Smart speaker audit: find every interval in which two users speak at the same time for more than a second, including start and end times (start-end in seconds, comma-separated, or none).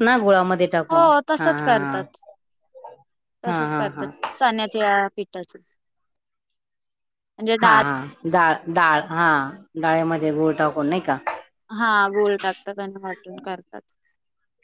none